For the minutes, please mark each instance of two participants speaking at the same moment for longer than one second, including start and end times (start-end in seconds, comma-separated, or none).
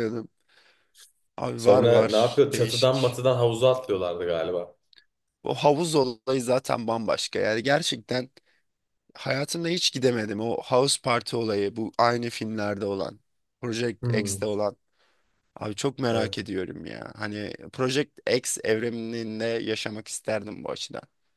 1.6-3.2